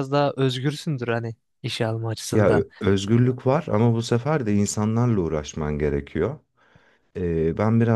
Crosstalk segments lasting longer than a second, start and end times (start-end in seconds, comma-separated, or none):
none